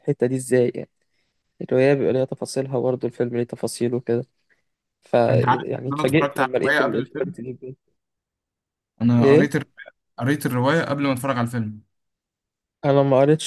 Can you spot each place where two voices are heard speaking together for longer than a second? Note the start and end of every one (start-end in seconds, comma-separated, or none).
5.3-7.3